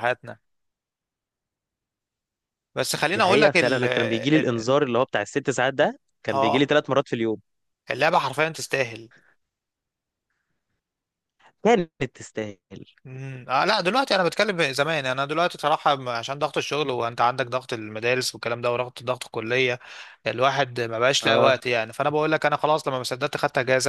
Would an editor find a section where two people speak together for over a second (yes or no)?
yes